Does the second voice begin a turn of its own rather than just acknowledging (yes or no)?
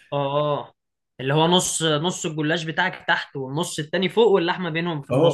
yes